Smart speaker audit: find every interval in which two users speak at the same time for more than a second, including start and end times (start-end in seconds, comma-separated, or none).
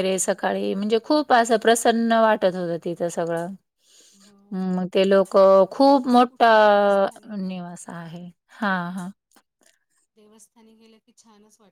6.1-7.3